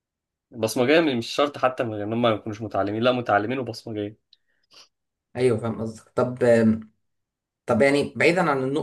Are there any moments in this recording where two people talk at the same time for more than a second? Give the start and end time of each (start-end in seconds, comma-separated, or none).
none